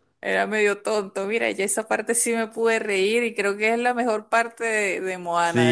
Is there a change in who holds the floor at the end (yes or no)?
yes